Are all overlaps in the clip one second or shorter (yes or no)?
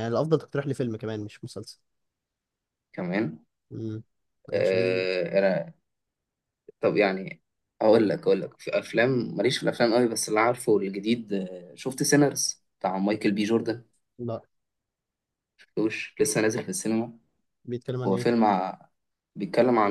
yes